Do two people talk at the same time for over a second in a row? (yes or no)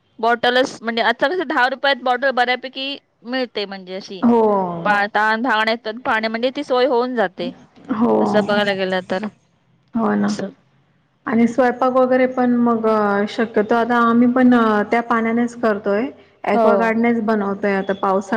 no